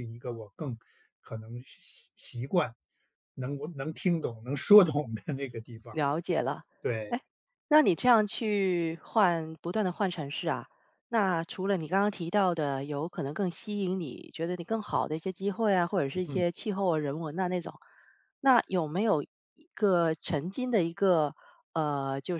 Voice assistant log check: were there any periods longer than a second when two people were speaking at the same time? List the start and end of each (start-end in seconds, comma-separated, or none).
none